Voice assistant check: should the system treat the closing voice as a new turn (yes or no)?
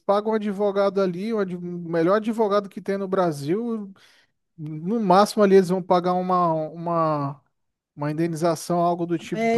yes